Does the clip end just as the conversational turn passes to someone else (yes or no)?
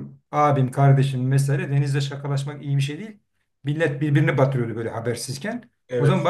no